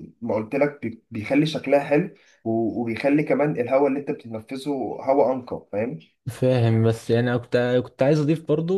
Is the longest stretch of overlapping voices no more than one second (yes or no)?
yes